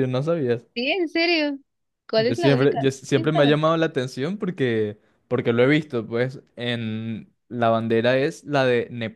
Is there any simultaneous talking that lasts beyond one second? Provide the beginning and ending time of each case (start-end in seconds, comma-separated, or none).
2.1-3.8